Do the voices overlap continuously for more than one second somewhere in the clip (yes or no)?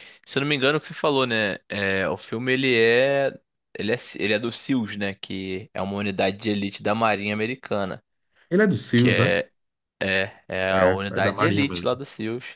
yes